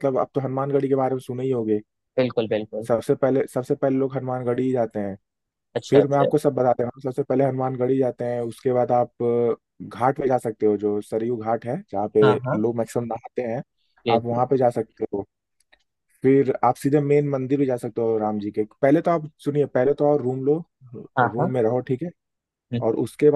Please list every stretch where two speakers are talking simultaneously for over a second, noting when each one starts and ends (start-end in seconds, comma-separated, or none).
none